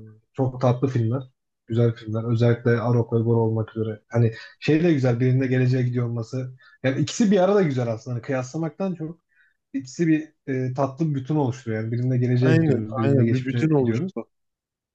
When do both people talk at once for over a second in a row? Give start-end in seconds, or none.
12.4-14.1